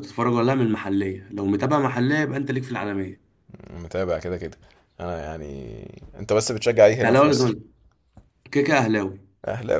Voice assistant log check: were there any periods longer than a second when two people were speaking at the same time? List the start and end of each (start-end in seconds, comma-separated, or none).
none